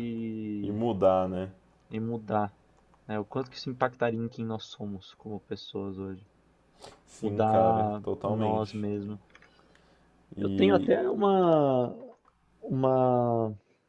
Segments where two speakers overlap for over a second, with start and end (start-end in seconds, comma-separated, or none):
7.2-8.8